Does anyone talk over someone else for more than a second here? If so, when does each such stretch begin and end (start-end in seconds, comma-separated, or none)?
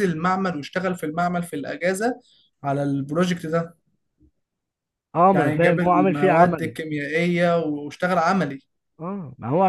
5.3-6.8